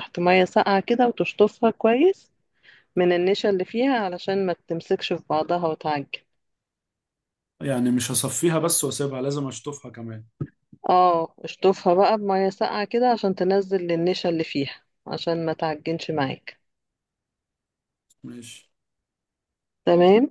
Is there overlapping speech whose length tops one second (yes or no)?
no